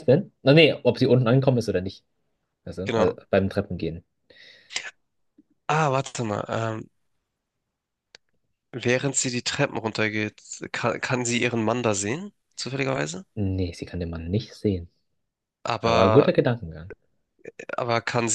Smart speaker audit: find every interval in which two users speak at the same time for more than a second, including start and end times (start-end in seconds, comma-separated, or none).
none